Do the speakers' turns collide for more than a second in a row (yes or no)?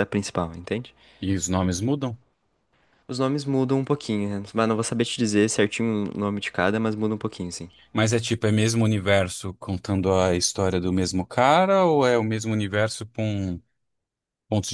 no